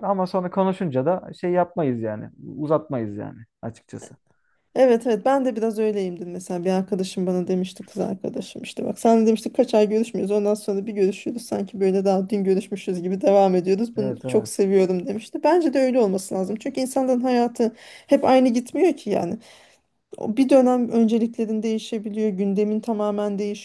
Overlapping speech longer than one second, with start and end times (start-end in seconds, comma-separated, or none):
none